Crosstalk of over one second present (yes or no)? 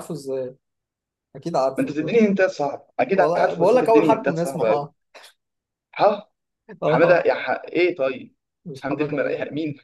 yes